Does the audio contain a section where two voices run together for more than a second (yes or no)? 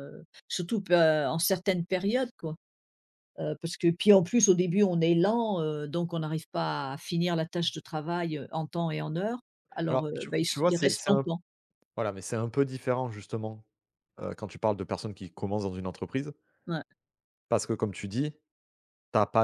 yes